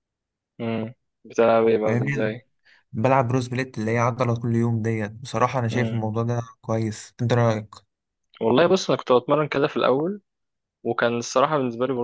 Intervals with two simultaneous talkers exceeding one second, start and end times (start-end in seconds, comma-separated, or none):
none